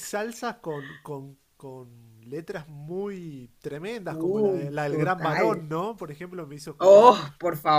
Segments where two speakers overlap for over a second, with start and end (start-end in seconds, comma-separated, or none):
4.1-5.5